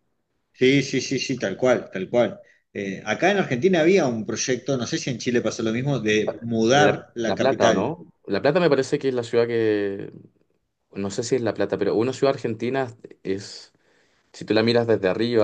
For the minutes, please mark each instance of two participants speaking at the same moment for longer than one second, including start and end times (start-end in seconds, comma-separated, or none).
6.7-8.0